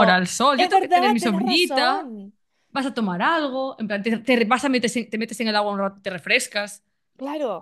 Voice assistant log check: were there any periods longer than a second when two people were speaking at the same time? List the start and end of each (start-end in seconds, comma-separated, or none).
0.6-2.1